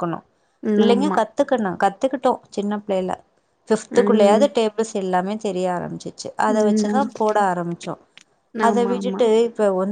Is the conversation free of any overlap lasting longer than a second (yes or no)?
yes